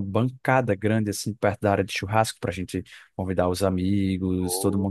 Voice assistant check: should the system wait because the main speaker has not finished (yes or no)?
yes